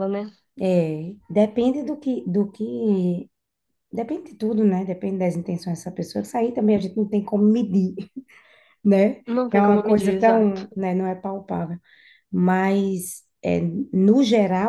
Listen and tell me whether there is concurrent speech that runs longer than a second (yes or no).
yes